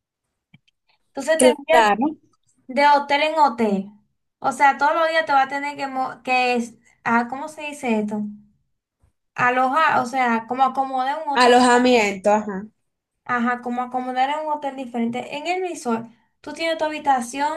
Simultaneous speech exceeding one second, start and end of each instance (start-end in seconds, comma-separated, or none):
none